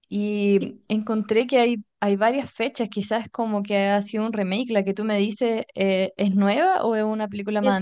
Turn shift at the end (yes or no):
yes